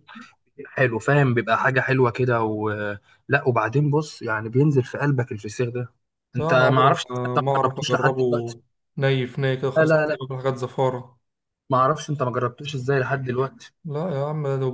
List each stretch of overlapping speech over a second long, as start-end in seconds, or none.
6.4-8.2